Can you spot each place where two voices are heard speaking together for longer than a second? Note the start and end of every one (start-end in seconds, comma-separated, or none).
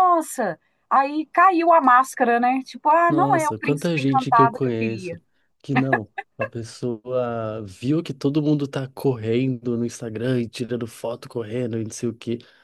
3.1-5.2